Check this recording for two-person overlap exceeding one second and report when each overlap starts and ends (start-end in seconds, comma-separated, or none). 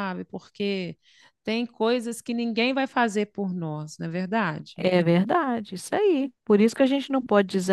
none